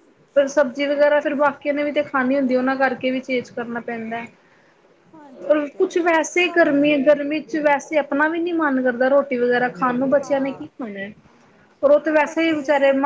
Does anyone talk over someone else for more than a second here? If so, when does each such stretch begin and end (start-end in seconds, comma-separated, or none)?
5.1-6.8